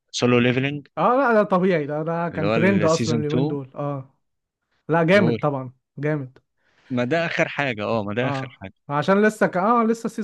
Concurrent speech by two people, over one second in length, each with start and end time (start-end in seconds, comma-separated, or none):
2.3-3.6